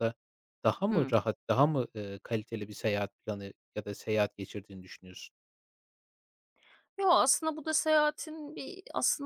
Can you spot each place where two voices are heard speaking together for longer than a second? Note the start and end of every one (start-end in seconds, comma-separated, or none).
none